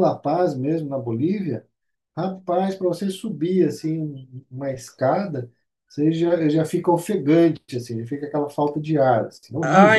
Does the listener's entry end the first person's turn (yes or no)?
yes